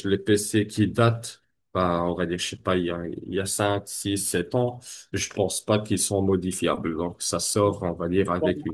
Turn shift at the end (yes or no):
no